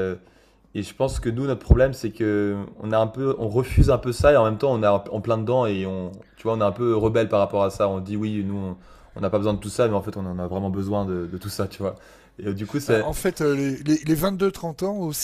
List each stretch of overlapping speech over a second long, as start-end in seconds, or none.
none